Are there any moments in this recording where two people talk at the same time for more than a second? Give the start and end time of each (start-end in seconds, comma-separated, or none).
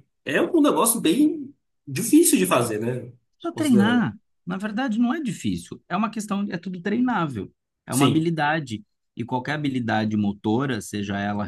none